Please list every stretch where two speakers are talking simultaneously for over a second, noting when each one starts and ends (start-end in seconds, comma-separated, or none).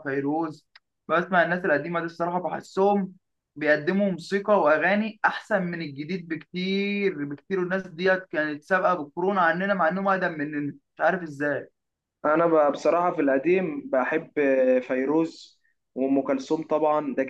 none